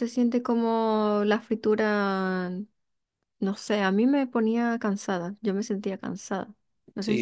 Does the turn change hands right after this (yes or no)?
yes